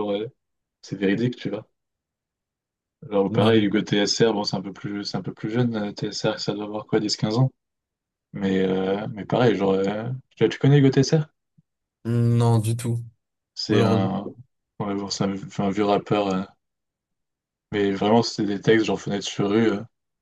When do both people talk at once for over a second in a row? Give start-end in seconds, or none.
none